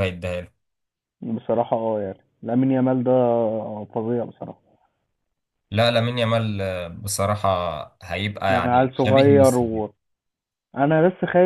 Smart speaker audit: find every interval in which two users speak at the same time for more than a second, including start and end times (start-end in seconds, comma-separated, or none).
8.5-9.8